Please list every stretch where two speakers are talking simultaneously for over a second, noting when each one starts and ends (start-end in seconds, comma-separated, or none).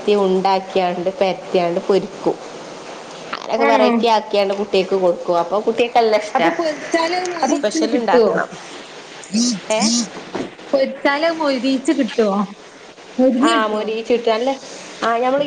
none